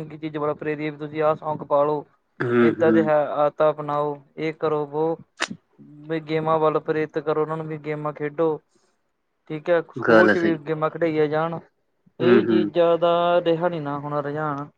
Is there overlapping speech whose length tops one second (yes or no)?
no